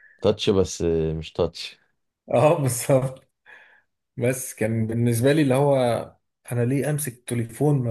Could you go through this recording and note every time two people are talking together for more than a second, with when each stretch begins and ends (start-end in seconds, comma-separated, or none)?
none